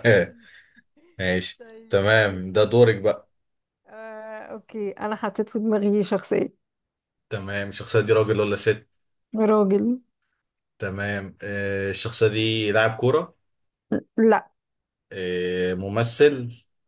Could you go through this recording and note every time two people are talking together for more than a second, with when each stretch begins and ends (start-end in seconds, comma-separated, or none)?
1.6-3.1